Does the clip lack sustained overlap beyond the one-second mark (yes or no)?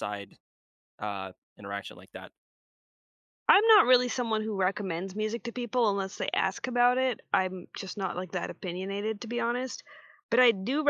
yes